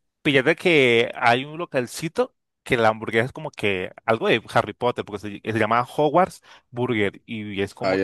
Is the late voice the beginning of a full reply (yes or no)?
no